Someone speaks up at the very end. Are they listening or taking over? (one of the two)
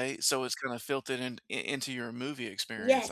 taking over